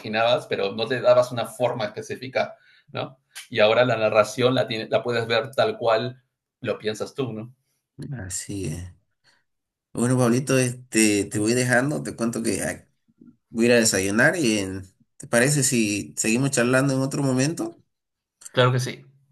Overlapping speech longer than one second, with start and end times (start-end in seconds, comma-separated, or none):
none